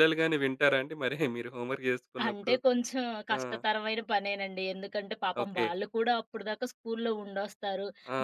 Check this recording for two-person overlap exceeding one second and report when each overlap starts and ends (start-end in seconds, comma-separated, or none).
none